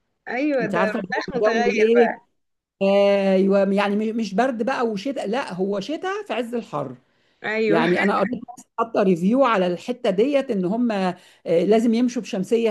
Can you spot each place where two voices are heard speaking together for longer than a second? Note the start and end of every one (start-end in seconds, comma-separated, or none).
0.6-2.3